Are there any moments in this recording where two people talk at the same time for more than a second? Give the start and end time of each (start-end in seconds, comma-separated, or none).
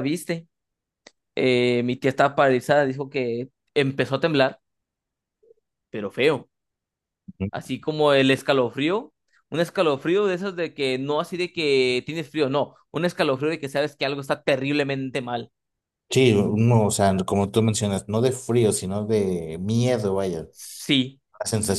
none